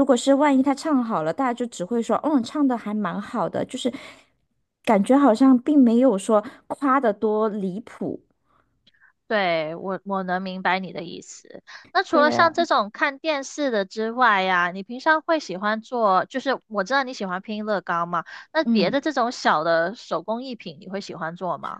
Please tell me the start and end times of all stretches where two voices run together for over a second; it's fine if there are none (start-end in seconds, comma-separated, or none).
none